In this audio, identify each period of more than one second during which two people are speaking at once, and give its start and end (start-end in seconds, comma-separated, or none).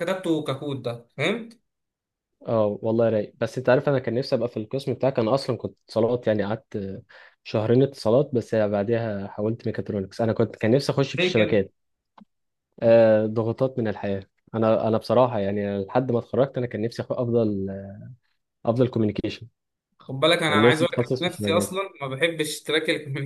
20.5-21.8